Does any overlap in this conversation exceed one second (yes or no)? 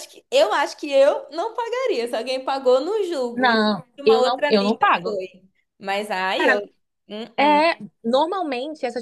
yes